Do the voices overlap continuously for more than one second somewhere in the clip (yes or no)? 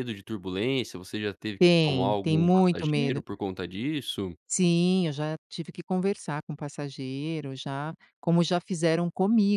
yes